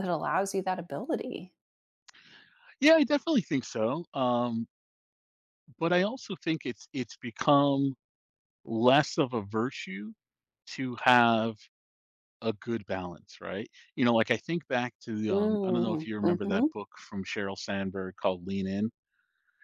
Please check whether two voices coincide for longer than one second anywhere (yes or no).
yes